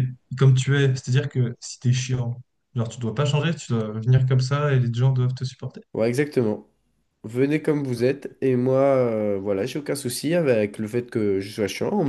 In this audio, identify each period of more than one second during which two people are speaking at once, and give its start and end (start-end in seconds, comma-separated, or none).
none